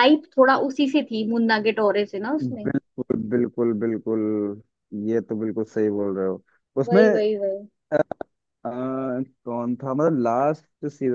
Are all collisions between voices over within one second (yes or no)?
yes